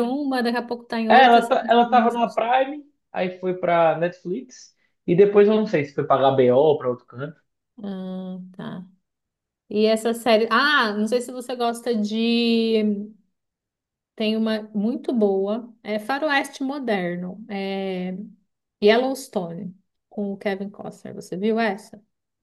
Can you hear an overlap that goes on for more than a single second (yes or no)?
yes